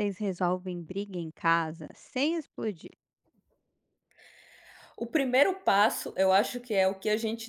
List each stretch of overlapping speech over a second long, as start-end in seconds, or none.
none